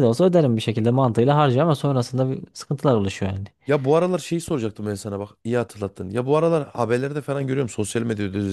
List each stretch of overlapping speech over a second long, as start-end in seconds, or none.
none